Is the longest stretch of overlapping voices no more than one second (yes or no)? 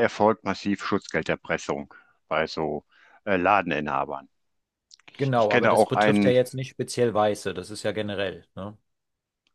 no